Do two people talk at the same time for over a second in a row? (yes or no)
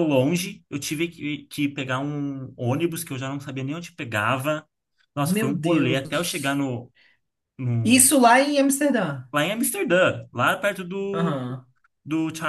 yes